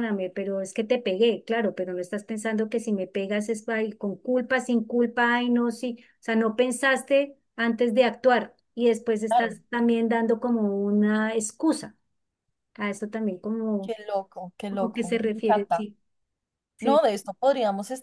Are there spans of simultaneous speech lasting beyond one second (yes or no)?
yes